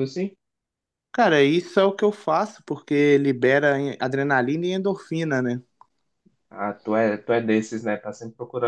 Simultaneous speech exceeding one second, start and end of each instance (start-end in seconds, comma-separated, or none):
none